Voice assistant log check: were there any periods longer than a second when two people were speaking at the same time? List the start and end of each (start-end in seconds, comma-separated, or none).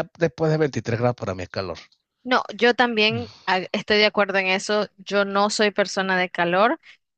none